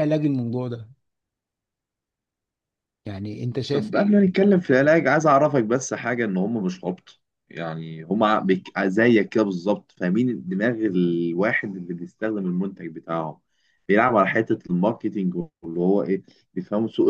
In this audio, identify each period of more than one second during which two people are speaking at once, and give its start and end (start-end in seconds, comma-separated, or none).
none